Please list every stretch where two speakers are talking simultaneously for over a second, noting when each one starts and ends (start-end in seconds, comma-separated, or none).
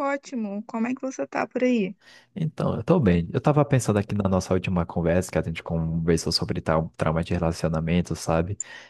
none